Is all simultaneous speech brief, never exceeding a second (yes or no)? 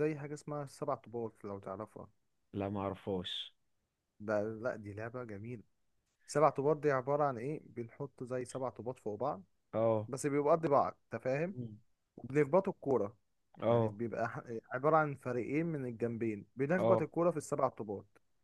yes